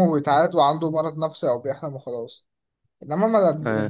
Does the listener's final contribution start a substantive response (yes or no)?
no